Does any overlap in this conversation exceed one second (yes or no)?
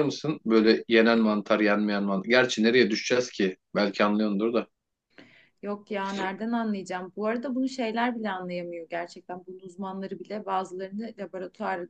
no